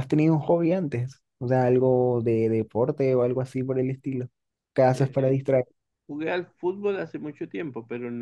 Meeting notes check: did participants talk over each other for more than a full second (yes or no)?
no